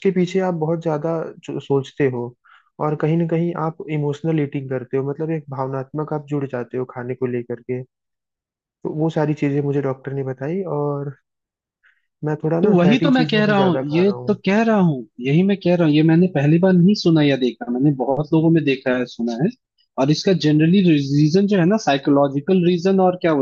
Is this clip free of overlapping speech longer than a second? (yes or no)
no